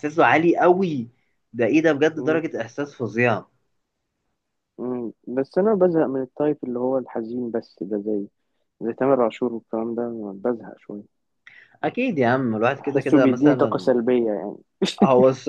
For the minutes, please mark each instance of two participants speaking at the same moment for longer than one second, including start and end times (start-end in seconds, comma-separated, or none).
12.8-14.0